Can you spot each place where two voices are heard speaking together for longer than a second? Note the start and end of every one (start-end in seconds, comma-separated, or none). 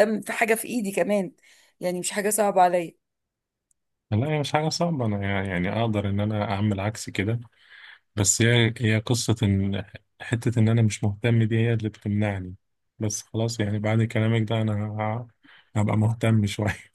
none